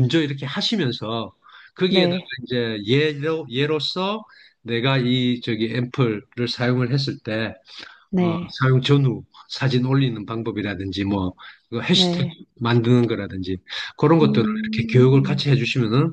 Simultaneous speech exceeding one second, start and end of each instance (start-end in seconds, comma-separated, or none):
14.2-15.5